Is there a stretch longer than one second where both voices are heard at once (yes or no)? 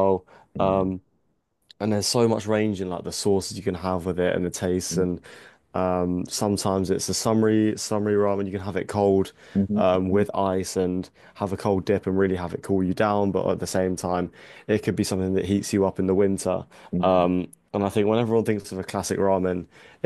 no